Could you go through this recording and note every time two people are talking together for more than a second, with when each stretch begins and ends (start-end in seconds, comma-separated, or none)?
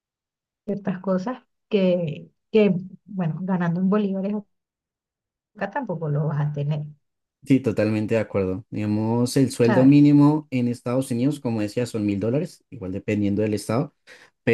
none